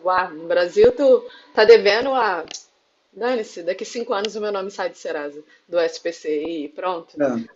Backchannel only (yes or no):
yes